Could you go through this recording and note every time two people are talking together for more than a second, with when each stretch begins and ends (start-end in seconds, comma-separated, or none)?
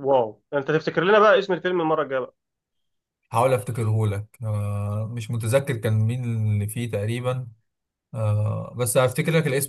none